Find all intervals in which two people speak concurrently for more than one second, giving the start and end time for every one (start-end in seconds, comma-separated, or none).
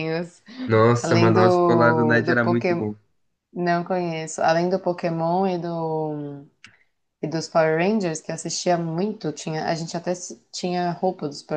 1.0-2.9